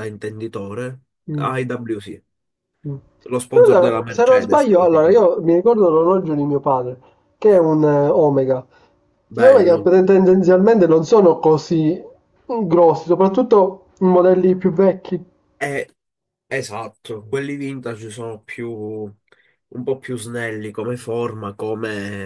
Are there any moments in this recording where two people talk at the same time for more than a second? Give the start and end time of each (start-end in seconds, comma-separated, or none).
3.5-5.3